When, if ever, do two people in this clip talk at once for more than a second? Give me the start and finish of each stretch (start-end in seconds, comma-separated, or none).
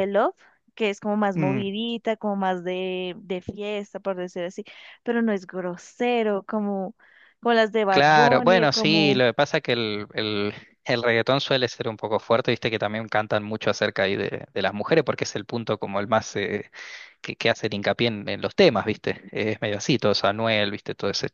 7.9-9.2